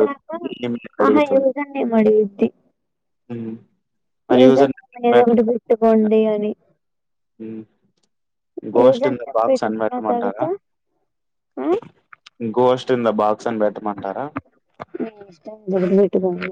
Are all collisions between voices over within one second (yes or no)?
no